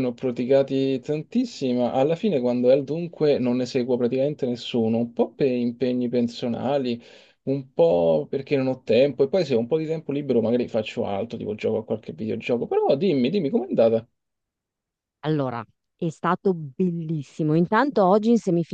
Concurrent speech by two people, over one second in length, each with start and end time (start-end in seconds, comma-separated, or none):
none